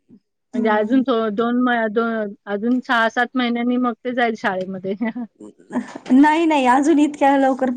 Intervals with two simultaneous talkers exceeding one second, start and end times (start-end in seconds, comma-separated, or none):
none